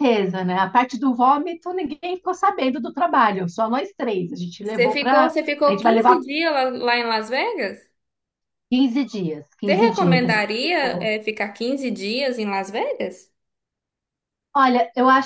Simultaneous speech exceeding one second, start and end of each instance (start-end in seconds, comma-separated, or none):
4.6-6.2, 9.7-11.1